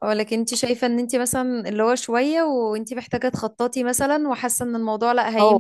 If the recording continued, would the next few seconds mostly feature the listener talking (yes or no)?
yes